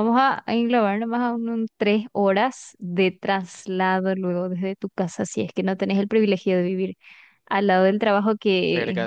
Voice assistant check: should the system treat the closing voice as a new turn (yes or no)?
no